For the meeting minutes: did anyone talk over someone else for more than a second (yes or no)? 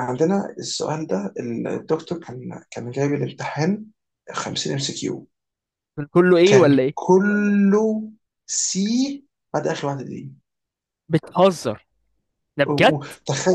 no